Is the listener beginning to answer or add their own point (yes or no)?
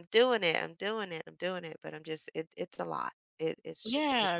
yes